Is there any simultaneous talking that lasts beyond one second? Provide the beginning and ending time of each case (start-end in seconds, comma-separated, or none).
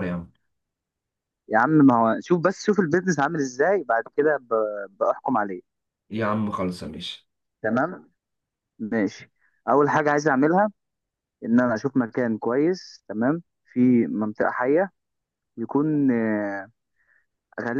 none